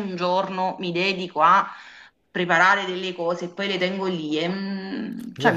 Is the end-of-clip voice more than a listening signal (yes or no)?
yes